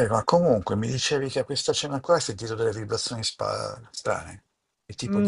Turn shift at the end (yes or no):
yes